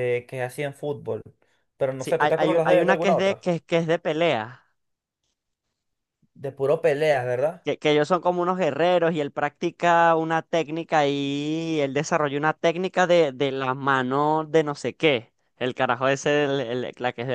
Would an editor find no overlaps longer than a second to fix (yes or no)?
no